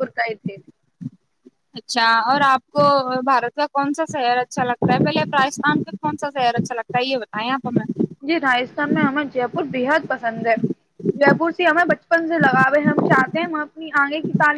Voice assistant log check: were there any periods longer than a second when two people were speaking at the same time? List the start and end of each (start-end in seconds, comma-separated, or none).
none